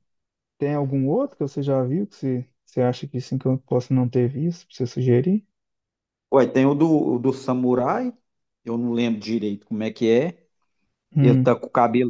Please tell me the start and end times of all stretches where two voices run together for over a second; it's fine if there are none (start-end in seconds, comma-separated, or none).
none